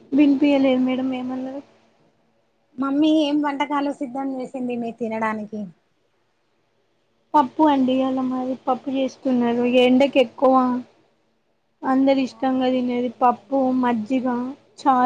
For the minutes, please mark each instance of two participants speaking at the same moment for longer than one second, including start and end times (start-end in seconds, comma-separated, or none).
12.3-14.2